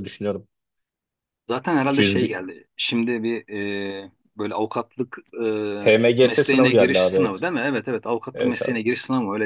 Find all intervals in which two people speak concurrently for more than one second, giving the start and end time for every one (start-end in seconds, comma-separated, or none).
6.2-7.5